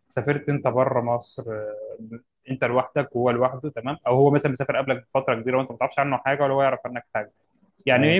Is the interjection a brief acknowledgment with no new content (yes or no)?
yes